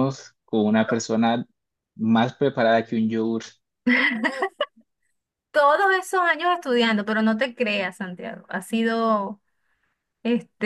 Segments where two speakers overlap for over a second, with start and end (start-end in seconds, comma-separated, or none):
none